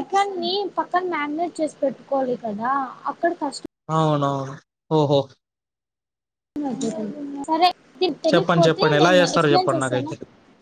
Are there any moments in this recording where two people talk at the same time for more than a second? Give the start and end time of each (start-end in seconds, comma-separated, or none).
8.3-10.1